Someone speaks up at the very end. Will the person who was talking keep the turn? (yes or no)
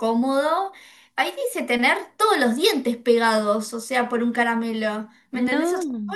yes